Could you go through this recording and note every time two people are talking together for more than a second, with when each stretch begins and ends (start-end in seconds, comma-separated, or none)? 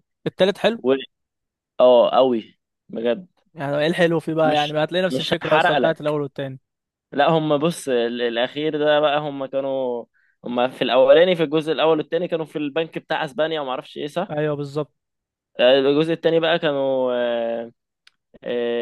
4.5-6.1